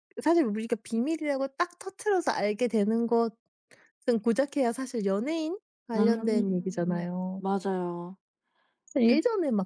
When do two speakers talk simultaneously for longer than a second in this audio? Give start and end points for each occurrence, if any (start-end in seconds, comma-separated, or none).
6.0-7.4